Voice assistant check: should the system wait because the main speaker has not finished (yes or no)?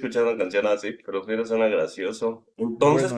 yes